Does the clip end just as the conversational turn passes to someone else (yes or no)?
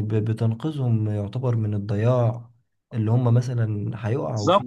no